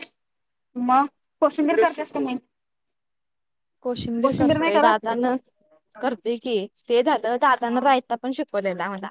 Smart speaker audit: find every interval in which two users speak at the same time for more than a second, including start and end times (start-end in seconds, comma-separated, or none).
none